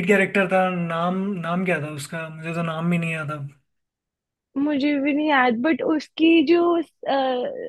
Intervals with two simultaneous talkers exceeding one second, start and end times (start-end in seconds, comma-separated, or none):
none